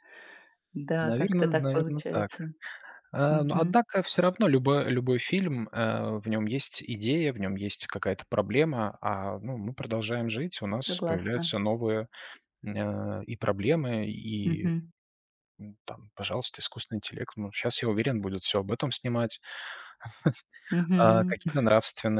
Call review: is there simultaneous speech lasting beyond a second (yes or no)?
yes